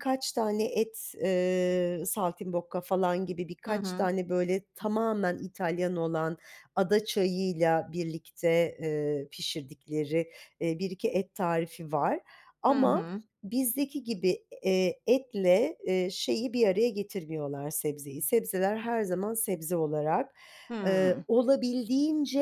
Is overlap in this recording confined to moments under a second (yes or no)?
yes